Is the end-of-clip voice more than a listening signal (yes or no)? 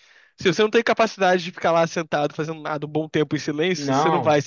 yes